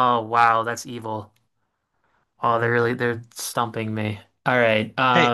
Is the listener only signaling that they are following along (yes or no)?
no